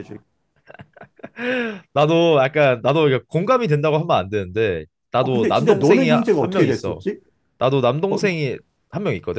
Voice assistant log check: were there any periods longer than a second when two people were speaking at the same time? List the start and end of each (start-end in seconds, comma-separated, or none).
5.2-7.0